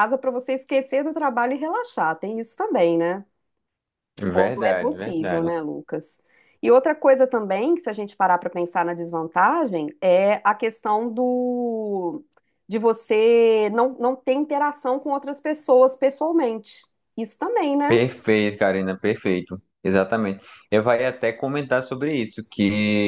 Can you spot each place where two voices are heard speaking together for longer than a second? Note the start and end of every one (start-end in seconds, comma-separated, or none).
4.2-5.5